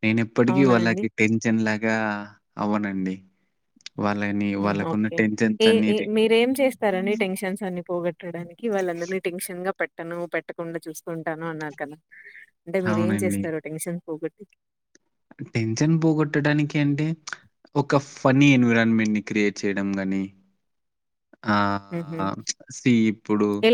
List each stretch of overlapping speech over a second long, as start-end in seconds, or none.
none